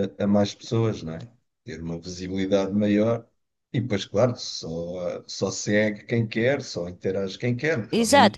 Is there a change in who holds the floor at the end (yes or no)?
yes